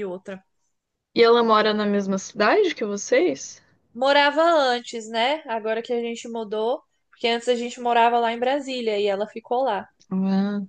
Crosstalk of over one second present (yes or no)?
no